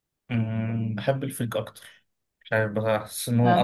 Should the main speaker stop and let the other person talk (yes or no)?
no